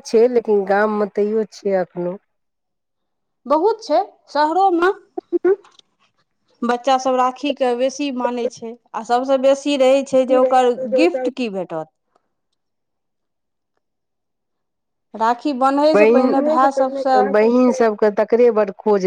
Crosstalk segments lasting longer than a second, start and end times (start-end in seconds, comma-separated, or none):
15.9-17.2